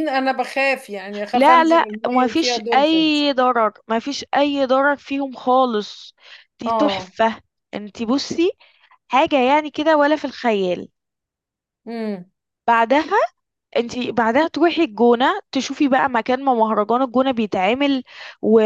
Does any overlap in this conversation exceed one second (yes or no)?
yes